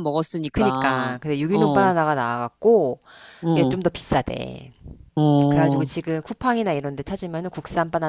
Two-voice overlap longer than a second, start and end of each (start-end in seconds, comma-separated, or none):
0.5-1.9